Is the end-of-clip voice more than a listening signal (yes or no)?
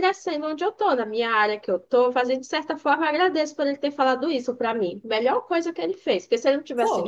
no